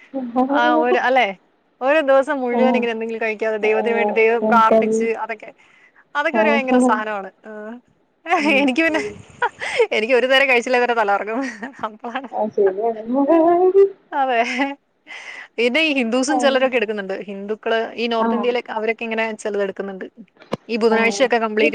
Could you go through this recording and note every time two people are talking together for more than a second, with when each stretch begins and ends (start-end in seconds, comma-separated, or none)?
3.8-5.1